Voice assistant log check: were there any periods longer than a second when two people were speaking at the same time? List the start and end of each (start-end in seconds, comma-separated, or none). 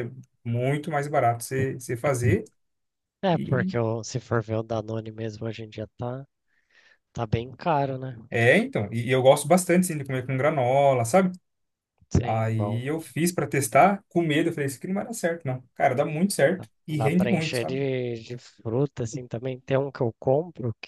16.6-17.8